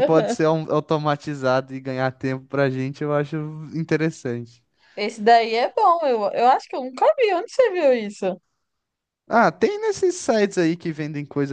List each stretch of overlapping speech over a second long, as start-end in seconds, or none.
none